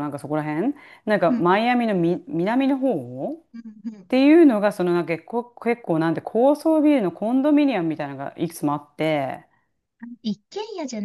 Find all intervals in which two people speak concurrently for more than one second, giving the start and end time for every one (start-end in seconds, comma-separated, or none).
none